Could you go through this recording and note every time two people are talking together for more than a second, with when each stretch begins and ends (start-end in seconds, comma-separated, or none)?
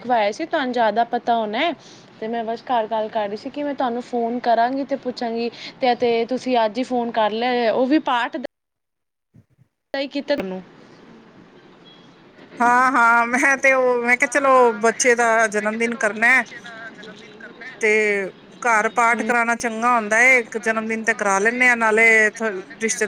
none